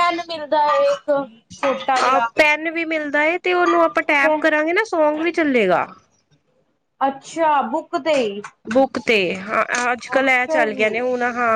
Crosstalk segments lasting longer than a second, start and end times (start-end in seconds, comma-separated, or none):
none